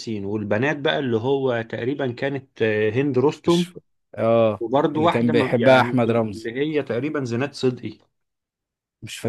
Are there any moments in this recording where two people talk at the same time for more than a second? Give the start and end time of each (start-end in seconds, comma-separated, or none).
4.6-6.5